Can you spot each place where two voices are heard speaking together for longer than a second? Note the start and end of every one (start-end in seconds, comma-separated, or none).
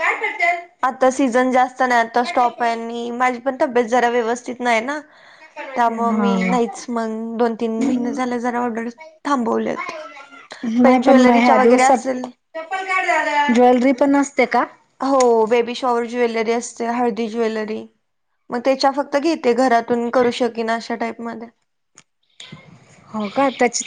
10.8-12.2